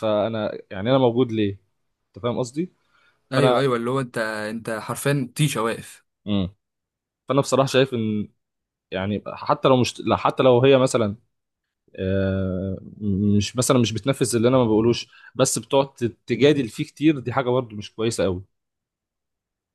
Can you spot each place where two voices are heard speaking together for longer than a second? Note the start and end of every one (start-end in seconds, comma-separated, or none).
none